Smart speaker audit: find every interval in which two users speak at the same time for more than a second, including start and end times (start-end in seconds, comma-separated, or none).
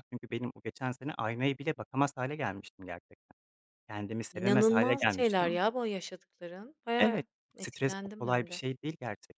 4.3-5.6, 7.0-8.6